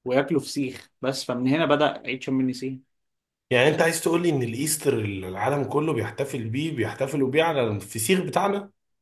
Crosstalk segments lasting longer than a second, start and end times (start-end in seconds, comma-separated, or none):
none